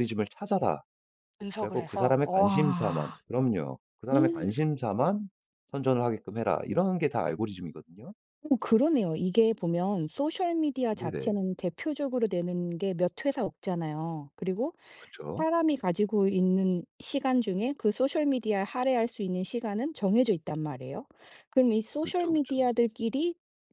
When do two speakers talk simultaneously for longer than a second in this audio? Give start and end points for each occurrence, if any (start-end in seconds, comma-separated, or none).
1.5-3.2